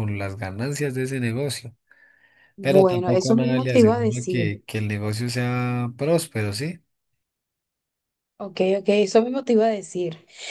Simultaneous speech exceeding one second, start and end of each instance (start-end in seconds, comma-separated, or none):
2.6-4.5